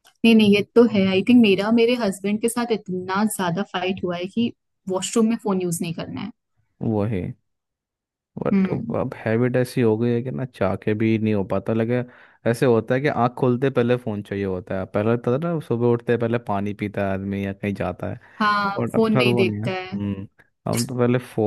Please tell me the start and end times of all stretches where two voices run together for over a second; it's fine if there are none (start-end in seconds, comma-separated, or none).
18.8-20.1